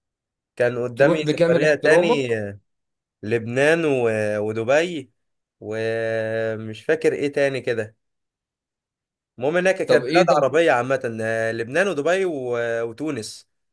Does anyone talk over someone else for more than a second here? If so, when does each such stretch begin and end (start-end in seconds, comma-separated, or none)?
1.0-2.3